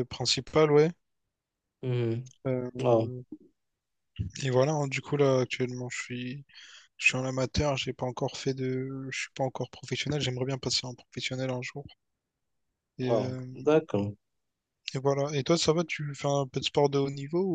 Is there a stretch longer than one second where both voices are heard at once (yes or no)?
no